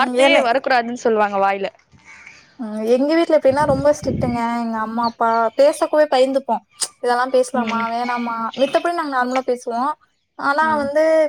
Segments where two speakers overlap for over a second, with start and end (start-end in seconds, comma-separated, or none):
none